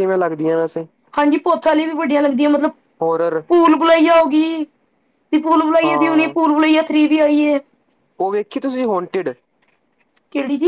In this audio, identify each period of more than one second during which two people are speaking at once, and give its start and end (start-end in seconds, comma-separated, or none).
none